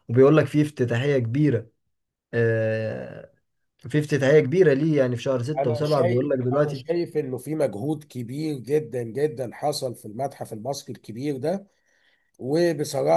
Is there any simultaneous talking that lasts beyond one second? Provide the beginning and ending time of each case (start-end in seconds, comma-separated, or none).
5.6-6.8